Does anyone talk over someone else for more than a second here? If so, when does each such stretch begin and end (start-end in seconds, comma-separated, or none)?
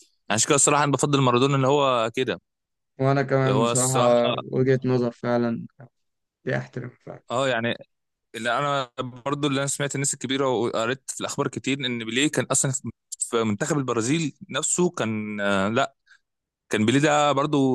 none